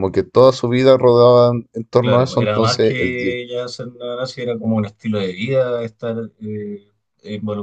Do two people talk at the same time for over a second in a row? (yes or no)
yes